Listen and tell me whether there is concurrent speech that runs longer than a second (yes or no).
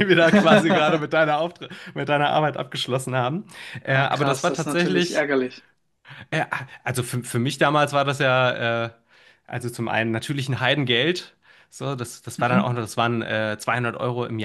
yes